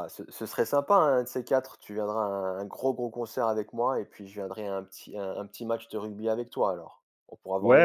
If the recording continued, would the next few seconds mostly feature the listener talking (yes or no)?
yes